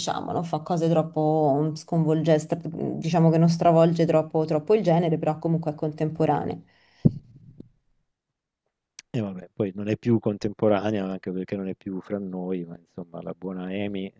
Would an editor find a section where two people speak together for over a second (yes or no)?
no